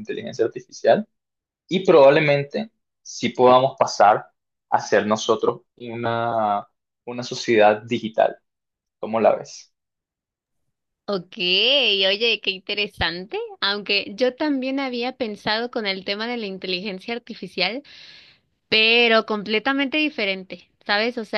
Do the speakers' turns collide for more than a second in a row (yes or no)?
no